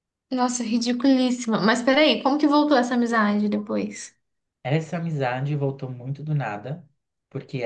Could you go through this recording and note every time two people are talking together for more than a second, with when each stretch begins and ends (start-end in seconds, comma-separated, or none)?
none